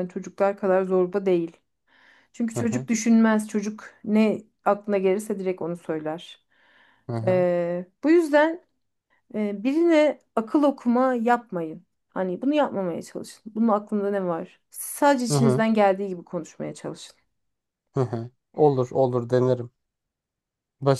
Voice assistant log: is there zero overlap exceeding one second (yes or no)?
yes